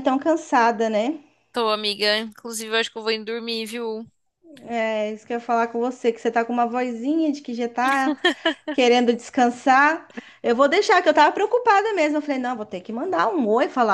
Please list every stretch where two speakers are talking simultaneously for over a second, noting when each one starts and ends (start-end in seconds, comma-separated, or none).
none